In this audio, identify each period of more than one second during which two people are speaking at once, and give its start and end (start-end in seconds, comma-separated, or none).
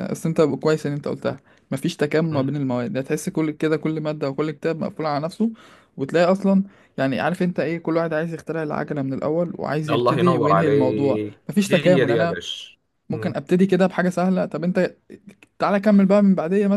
9.9-12.4